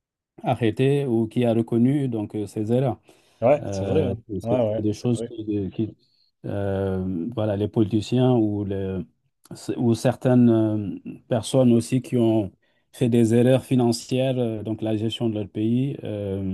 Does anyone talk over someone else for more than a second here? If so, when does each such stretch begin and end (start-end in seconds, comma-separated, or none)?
3.6-5.3